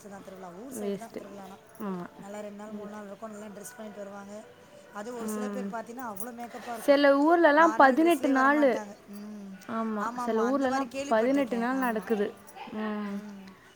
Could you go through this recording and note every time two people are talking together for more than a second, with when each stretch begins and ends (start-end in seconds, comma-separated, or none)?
10.1-12.1